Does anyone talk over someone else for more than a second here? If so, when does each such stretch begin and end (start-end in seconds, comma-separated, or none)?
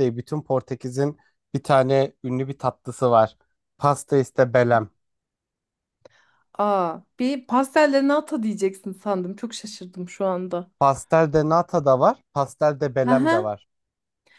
none